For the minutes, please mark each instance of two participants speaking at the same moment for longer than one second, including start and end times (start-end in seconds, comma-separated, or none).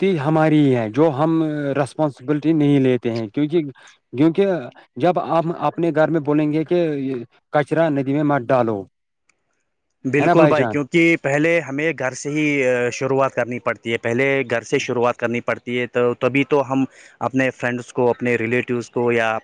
none